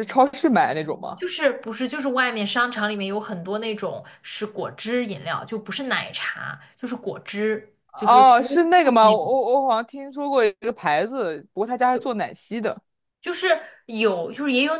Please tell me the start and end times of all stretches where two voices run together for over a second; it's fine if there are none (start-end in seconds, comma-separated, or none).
7.9-9.3